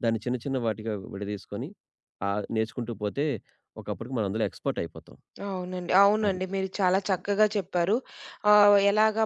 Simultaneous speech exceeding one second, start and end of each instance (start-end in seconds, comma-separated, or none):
none